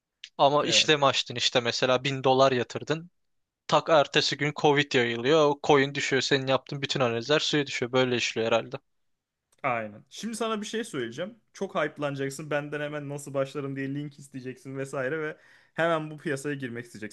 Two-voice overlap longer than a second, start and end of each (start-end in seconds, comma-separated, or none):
none